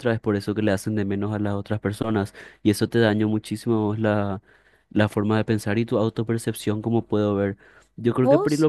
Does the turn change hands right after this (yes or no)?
no